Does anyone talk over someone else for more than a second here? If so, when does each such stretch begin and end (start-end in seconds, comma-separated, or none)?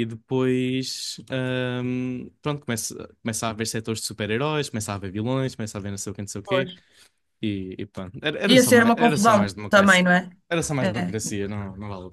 8.4-10.1